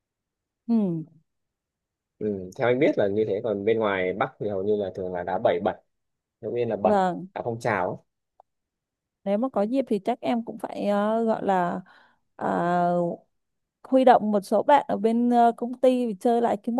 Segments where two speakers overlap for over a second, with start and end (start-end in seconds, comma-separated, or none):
none